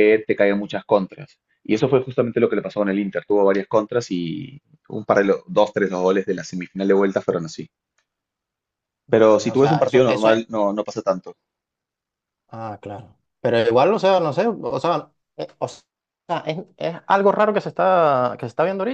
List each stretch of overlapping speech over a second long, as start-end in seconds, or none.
9.1-10.4